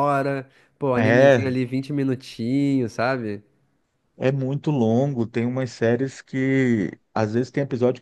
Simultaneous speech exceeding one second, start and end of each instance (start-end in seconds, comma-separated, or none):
none